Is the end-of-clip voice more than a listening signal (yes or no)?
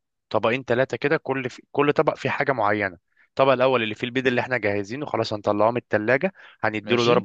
no